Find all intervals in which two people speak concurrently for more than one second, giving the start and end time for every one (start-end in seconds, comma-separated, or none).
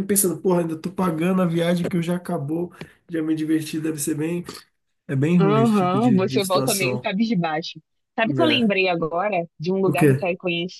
5.4-7.1